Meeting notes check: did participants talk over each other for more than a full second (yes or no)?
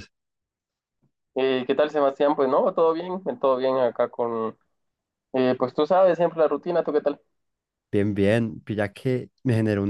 no